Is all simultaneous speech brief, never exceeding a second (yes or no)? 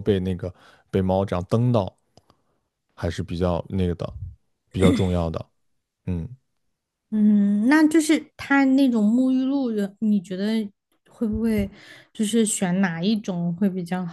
yes